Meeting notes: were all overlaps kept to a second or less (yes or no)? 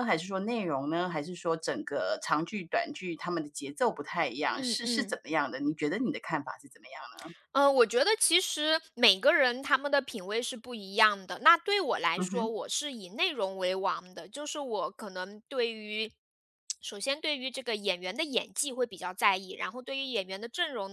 yes